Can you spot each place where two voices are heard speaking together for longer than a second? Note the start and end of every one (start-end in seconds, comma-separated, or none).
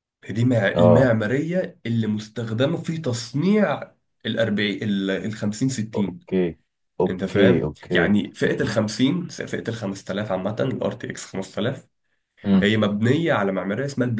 7.1-8.8